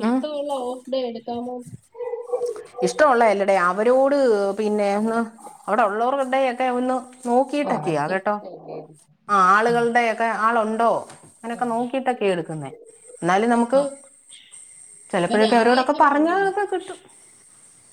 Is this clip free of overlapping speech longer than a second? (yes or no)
no